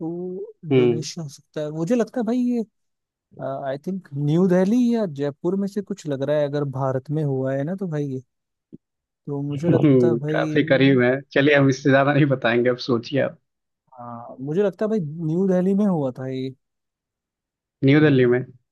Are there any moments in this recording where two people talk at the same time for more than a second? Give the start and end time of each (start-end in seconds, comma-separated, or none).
9.5-11.0